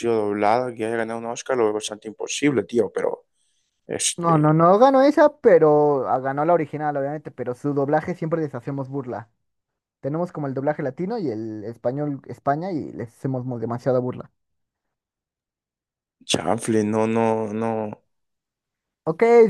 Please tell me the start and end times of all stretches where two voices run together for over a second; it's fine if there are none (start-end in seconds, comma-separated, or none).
none